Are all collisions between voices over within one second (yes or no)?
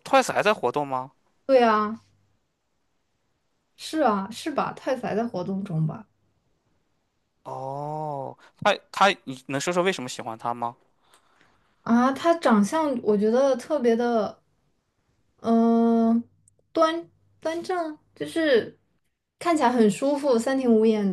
yes